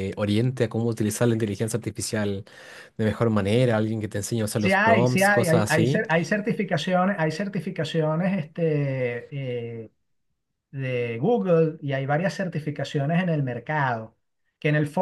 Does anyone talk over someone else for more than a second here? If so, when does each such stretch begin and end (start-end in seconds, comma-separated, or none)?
4.6-6.0